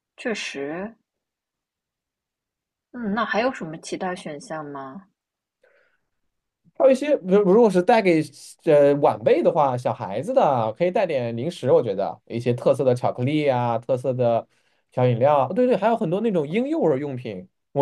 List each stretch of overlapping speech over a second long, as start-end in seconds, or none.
none